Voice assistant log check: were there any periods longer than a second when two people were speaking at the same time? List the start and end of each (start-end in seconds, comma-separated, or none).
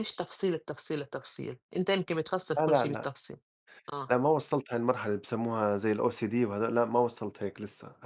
none